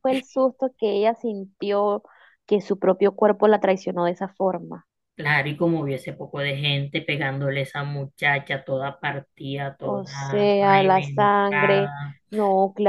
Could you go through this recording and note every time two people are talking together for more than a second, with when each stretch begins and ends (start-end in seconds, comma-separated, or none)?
9.8-11.9